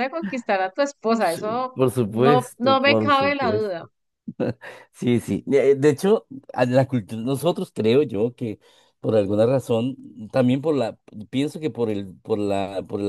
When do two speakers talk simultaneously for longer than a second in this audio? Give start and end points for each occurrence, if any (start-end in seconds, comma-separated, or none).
1.7-3.8